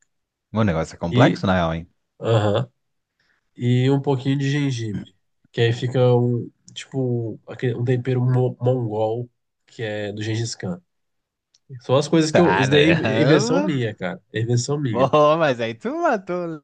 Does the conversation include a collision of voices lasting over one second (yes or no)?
yes